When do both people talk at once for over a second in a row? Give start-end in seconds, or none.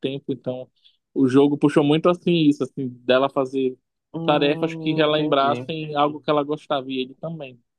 4.2-5.7